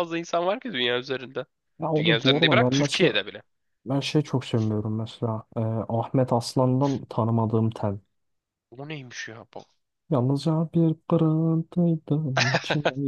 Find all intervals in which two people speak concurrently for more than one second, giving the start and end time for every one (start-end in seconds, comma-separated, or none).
2.0-3.2